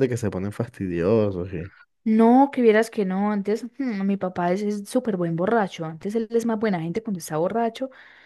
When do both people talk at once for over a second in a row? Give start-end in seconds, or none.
none